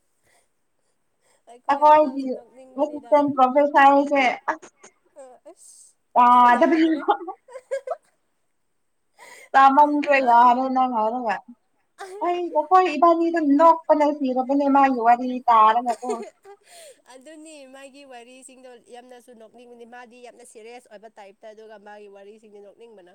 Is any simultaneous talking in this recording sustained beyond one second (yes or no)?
yes